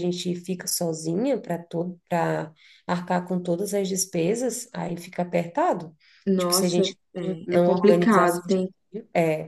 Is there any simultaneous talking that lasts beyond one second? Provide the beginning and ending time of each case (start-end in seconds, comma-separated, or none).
6.4-8.6